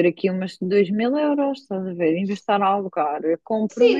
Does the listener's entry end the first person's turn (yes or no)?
yes